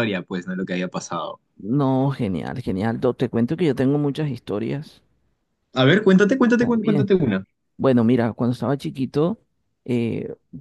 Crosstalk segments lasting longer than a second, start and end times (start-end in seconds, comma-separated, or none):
none